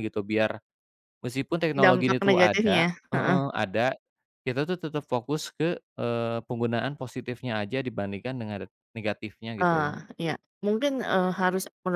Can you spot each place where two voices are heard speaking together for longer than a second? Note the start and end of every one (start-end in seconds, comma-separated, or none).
1.8-3.4